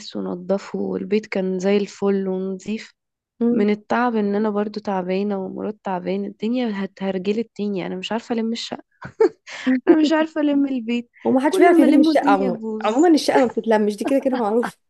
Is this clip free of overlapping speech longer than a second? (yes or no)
no